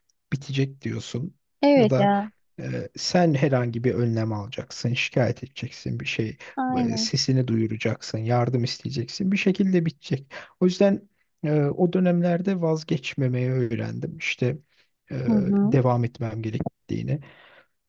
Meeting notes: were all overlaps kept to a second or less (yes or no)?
yes